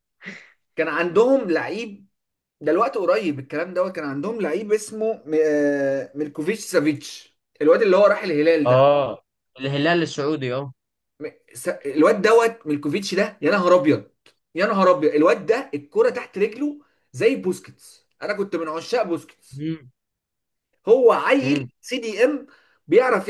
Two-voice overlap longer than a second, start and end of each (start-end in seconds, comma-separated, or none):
none